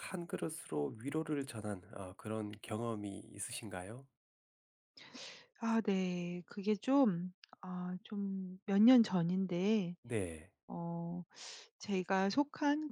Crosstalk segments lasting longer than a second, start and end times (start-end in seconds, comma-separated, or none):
none